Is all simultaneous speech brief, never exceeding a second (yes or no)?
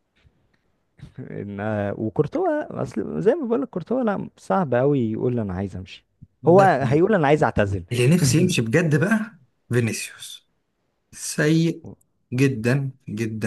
yes